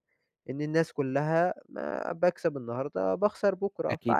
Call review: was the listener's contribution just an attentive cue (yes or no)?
no